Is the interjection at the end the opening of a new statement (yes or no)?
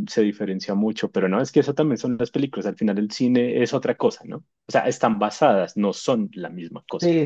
yes